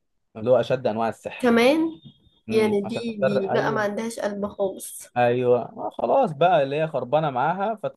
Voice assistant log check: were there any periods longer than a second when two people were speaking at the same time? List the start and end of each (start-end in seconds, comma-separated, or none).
2.5-3.9